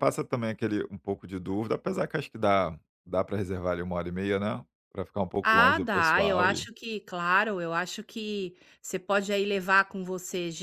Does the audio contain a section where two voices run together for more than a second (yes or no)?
yes